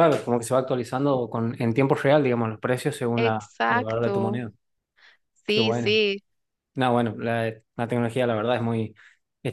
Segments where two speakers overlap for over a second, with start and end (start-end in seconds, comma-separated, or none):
3.1-4.4